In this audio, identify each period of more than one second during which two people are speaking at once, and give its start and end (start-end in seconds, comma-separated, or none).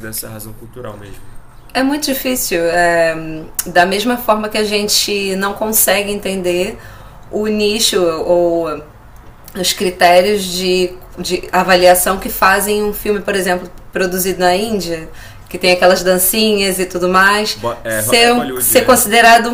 17.5-19.0